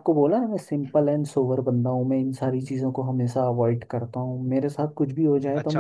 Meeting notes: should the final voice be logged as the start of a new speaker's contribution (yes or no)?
yes